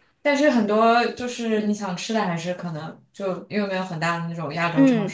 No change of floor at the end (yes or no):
no